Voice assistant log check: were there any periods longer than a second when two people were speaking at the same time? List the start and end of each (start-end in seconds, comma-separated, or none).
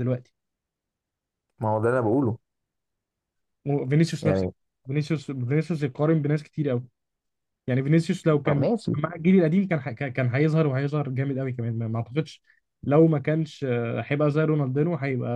none